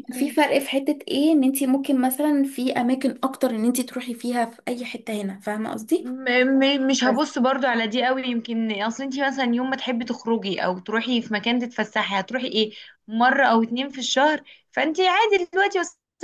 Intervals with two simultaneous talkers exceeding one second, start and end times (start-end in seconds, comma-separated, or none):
none